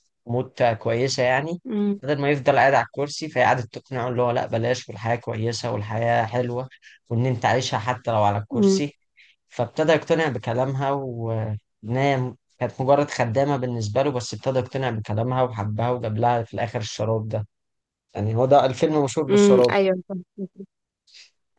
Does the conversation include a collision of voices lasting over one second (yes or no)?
no